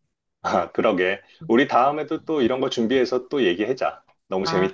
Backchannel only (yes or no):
no